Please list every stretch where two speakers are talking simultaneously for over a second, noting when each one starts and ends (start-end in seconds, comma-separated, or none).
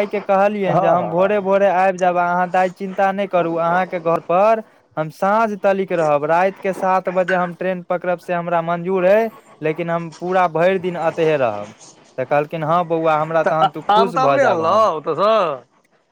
13.4-14.9